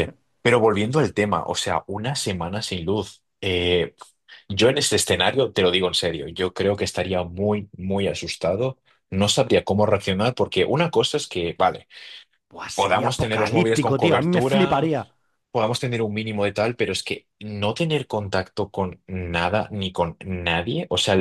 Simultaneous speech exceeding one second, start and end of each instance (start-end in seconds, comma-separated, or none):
12.7-14.9